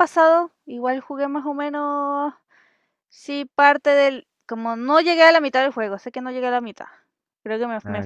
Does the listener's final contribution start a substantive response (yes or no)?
no